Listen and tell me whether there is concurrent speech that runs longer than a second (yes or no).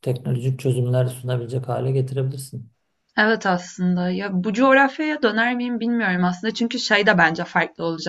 no